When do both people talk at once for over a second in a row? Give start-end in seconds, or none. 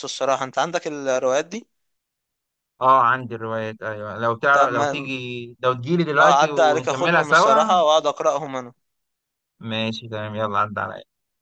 6.2-7.7